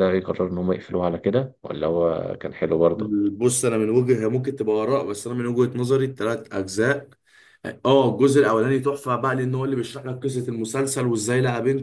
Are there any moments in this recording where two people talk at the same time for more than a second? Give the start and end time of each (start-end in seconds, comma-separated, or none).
none